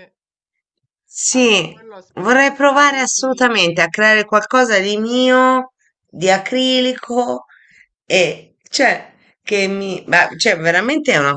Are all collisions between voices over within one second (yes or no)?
no